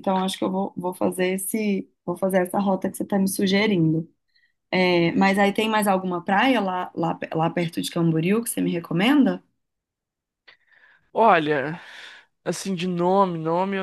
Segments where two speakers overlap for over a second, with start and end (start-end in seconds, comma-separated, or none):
none